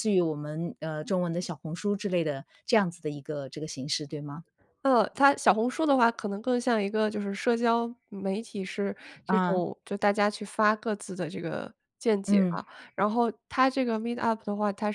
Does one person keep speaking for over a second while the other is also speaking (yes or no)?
no